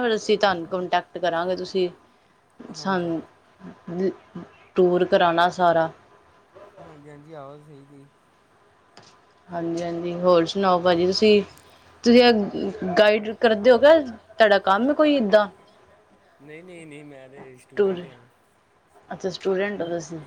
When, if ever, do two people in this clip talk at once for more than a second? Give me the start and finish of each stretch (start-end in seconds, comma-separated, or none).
none